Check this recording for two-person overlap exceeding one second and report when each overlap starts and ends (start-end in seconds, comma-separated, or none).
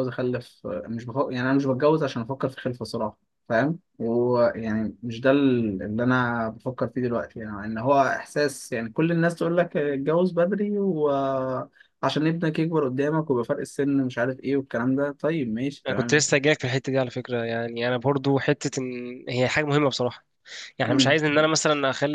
none